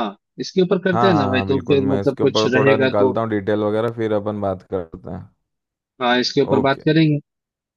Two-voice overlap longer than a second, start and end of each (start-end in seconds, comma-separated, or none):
0.9-3.1